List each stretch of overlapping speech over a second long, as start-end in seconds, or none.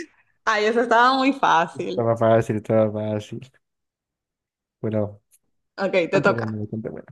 none